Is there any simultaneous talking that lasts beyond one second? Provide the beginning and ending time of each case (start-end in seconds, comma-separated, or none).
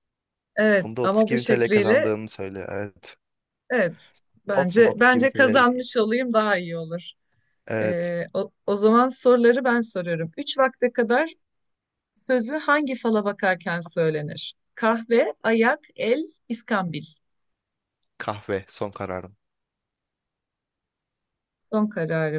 0.8-2.1, 4.5-5.8